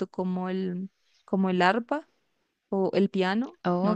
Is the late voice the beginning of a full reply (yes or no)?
yes